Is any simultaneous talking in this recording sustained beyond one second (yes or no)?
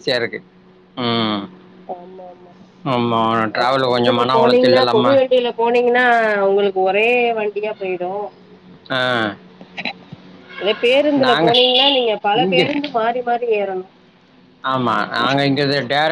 yes